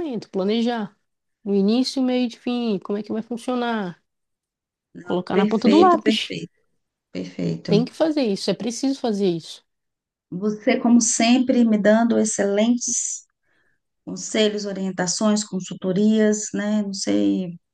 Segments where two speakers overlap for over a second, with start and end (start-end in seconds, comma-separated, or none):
5.0-6.4